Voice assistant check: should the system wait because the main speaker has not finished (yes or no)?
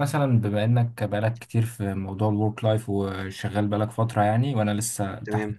no